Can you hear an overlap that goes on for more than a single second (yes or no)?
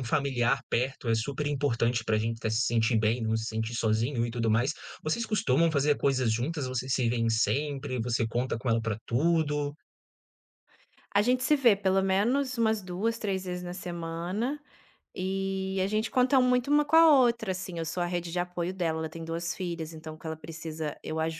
no